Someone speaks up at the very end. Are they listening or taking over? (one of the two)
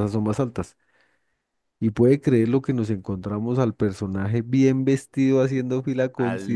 listening